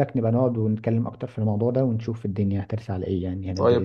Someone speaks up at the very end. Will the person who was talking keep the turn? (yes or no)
no